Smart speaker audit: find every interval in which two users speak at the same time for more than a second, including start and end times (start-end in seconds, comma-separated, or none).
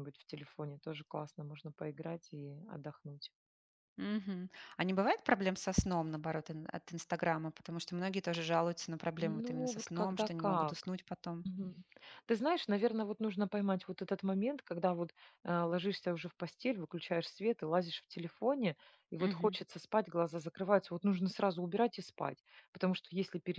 9.2-10.9